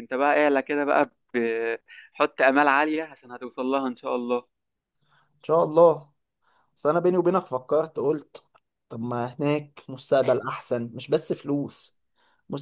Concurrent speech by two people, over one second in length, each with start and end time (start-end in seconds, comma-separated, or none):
none